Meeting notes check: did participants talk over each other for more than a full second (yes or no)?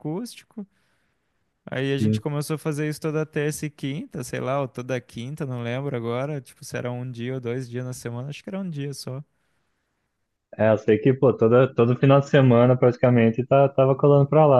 no